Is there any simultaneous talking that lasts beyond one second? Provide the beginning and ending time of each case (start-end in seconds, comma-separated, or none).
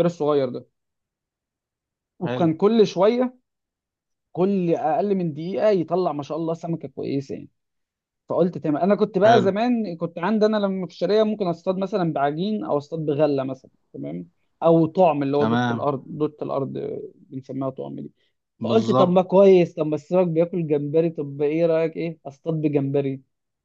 none